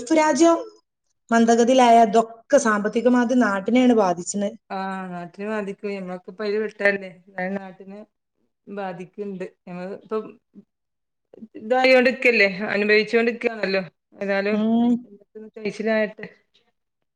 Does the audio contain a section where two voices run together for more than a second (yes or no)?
no